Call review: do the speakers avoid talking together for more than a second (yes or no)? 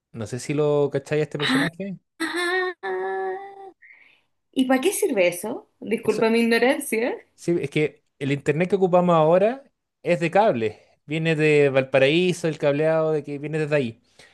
yes